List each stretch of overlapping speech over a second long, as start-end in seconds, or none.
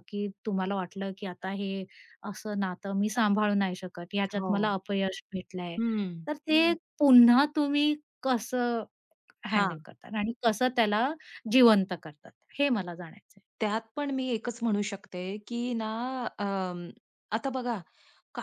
none